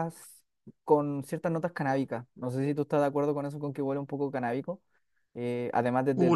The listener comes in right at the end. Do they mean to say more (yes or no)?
yes